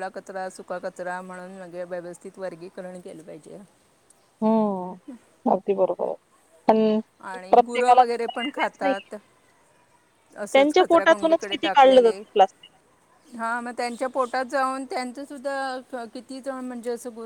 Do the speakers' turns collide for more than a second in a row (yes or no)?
yes